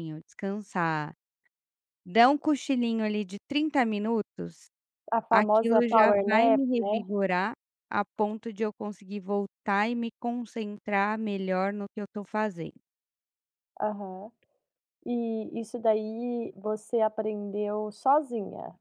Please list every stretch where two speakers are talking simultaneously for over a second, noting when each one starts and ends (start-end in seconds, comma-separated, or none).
5.3-7.0